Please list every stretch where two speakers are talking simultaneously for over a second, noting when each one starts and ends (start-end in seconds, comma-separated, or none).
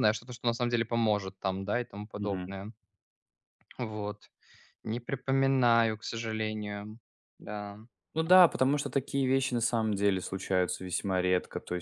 none